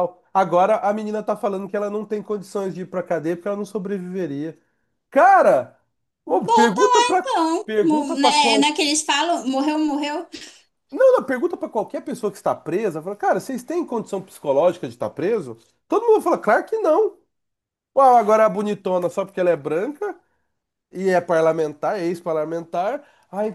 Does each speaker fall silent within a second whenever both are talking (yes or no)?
no